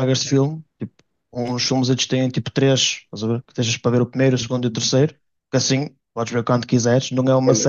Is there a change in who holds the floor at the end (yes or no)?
yes